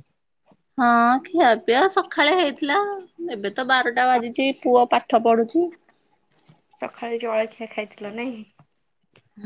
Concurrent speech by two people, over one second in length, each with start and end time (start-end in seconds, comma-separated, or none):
none